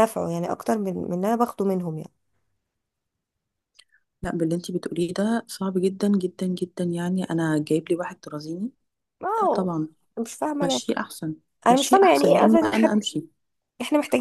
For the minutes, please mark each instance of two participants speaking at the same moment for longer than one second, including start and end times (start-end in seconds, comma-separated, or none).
11.7-13.0